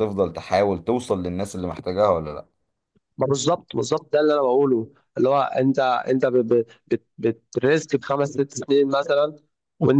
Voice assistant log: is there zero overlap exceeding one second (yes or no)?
yes